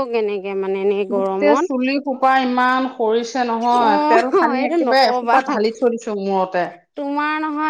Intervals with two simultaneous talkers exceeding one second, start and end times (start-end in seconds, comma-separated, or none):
3.9-5.4